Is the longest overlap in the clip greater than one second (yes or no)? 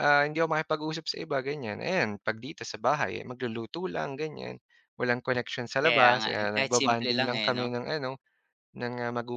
yes